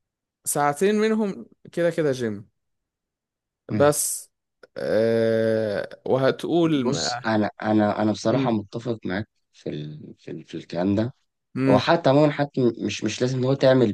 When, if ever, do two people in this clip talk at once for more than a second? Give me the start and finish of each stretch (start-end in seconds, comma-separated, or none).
none